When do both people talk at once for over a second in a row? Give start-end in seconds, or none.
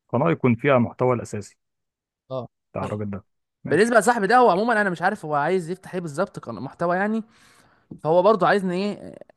none